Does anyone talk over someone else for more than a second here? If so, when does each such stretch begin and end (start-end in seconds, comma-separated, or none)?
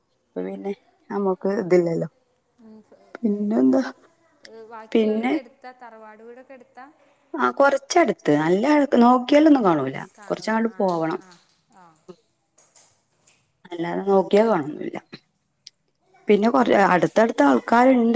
none